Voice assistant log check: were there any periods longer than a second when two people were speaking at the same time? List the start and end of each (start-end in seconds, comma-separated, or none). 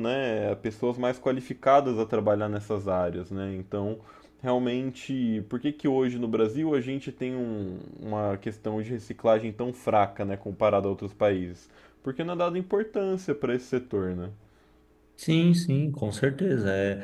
none